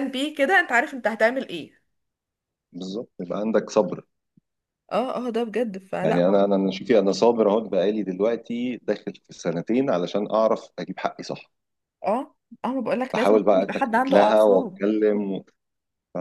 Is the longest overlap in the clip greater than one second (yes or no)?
yes